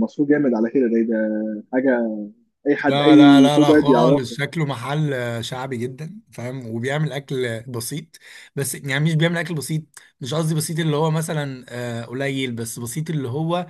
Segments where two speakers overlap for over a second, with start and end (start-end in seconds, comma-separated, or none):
2.9-4.4